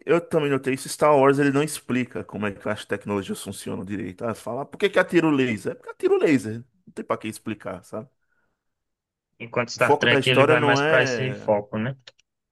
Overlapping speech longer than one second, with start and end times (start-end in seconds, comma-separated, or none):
9.8-11.5